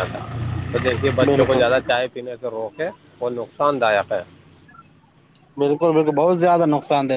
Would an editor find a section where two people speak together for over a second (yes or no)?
no